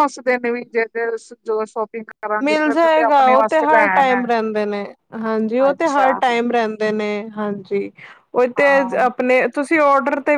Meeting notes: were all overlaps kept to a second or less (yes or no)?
no